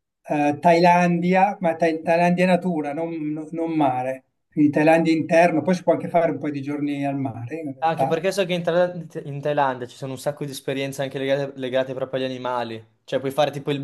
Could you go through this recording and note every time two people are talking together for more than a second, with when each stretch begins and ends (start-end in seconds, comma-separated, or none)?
none